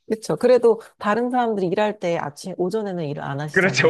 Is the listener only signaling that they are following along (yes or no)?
no